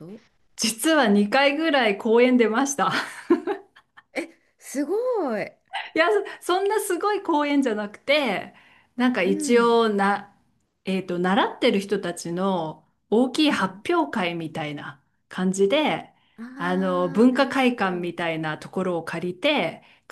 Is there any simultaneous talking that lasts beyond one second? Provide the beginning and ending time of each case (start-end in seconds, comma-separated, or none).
16.6-18.1